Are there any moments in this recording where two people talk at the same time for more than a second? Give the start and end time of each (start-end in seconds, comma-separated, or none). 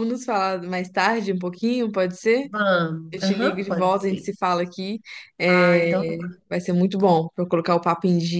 3.1-4.3